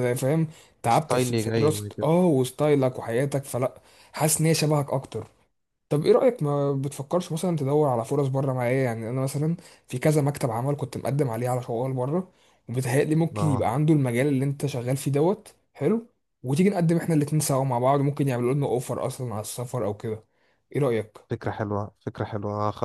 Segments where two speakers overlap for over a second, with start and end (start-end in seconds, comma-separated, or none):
0.9-2.1